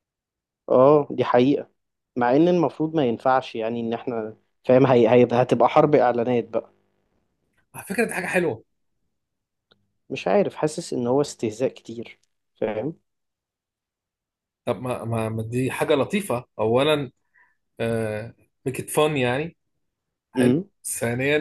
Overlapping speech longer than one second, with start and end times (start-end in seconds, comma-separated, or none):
none